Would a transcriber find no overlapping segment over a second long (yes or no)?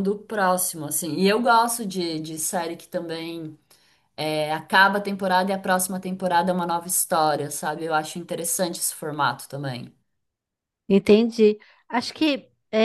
yes